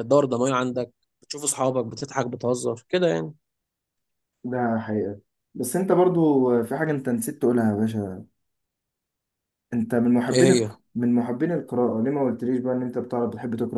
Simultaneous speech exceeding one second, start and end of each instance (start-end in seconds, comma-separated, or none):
none